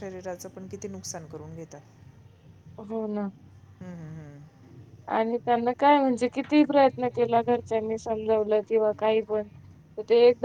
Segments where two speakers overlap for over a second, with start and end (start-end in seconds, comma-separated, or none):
none